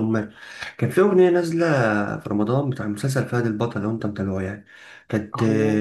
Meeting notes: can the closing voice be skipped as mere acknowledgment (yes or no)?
yes